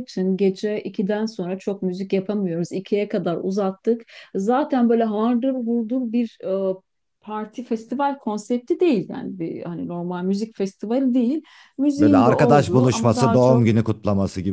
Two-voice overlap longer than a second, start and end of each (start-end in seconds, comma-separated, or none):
12.0-13.7